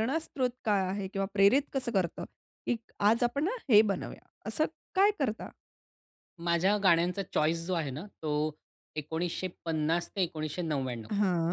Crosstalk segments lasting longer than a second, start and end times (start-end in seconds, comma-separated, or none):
none